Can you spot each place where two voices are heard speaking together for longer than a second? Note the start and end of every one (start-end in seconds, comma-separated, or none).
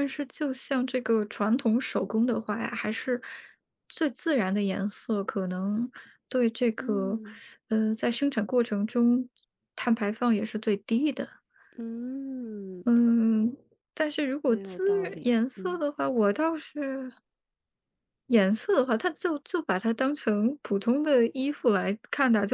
14.5-15.8